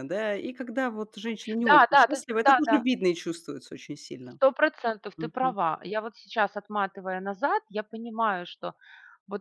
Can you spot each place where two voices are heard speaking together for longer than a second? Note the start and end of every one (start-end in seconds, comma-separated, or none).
1.6-2.9